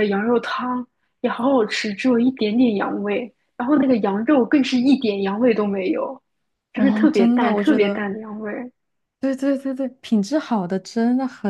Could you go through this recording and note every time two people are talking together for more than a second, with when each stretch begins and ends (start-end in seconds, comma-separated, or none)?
6.7-8.0